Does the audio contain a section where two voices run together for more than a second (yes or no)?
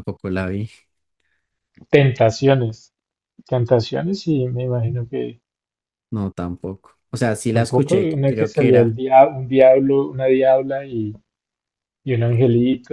yes